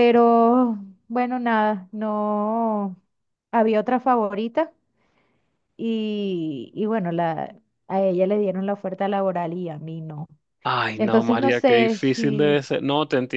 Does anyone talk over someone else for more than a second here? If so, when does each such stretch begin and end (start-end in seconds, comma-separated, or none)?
11.0-12.7